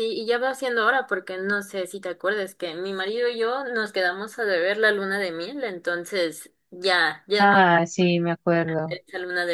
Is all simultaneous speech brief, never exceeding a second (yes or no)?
yes